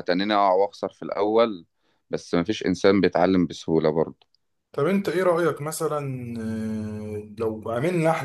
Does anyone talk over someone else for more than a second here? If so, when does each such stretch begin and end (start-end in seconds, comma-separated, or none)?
none